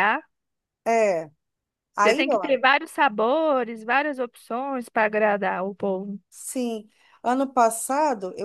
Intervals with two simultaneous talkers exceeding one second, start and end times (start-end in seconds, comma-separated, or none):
none